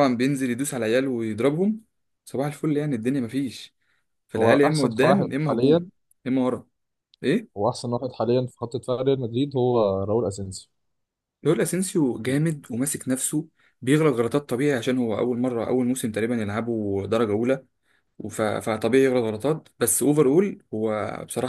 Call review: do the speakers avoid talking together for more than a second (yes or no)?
no